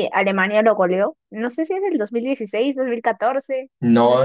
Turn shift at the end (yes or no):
yes